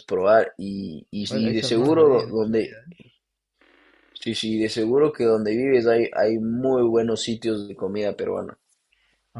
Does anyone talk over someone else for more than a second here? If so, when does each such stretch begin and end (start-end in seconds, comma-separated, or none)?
1.3-2.7